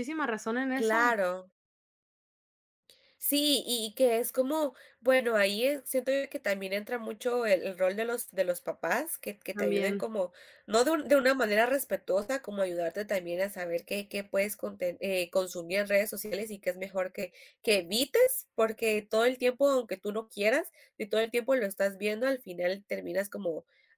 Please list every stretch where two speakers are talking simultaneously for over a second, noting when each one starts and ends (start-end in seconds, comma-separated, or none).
none